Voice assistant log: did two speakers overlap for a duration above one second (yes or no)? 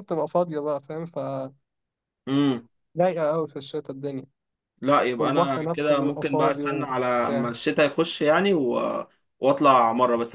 yes